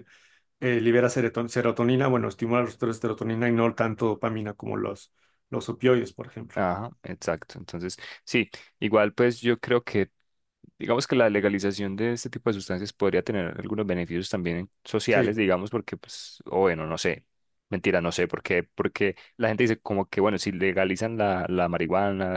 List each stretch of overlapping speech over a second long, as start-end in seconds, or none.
none